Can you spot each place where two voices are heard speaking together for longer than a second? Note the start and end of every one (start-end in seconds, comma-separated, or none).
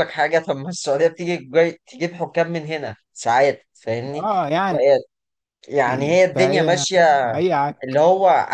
none